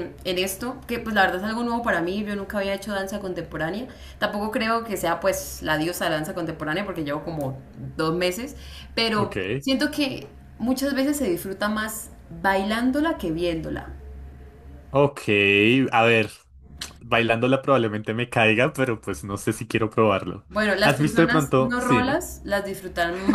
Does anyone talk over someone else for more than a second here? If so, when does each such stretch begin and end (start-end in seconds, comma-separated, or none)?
20.8-22.2